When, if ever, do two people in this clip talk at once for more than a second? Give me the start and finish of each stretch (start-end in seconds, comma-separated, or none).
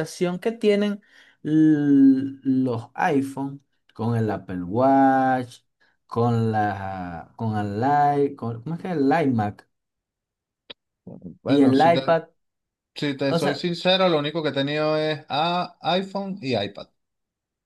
none